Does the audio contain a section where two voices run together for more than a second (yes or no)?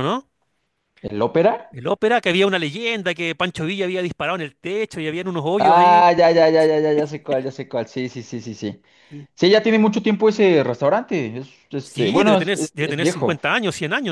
yes